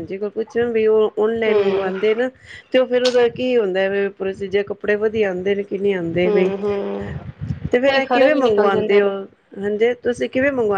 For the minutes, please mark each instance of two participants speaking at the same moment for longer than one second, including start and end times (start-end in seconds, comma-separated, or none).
7.9-9.1